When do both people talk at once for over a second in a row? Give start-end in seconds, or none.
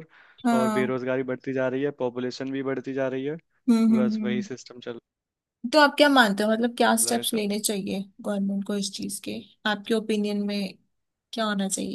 none